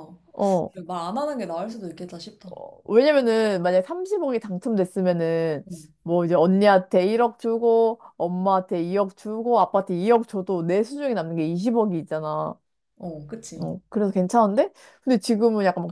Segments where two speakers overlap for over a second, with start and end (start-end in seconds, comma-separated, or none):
none